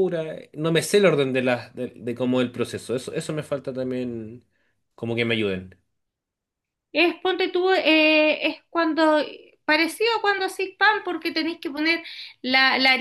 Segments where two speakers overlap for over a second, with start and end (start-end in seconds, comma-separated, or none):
none